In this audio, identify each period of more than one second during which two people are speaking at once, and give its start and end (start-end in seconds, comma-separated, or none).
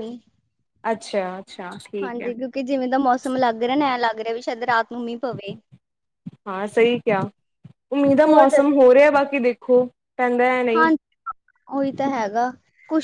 none